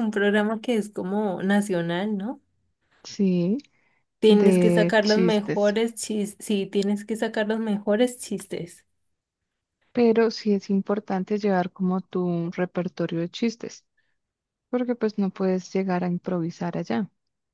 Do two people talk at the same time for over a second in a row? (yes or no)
yes